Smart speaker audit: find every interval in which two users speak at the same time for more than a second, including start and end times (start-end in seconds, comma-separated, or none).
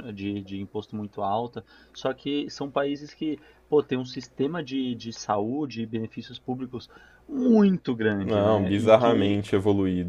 8.2-9.4